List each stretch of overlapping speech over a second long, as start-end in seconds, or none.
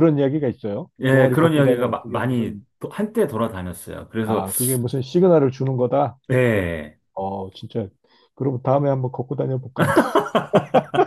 1.0-2.6